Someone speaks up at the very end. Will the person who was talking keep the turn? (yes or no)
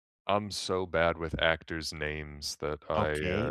no